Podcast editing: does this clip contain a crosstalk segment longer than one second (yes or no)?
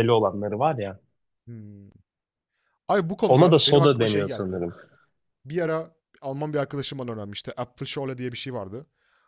yes